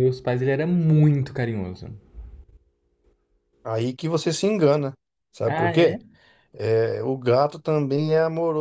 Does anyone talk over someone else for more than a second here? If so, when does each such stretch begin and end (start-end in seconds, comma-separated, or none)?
none